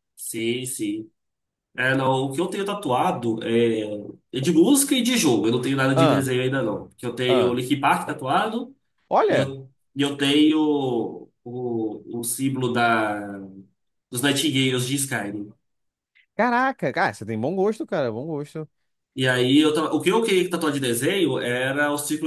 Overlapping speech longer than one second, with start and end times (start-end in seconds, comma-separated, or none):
none